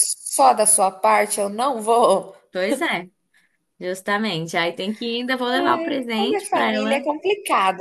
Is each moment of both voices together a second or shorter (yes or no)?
no